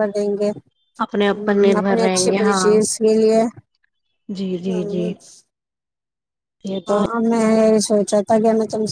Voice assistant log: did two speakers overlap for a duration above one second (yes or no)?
yes